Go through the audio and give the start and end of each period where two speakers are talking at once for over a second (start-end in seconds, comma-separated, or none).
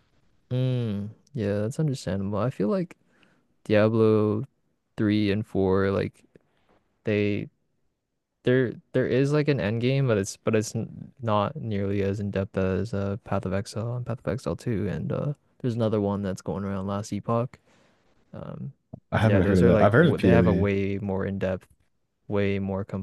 19.2-20.7